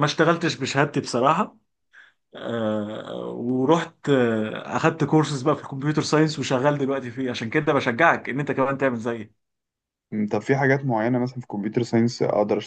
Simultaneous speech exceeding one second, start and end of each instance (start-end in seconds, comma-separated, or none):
none